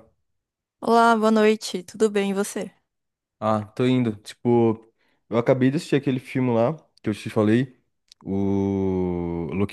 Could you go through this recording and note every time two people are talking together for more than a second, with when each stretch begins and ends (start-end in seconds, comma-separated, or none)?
none